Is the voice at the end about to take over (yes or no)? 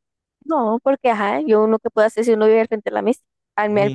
yes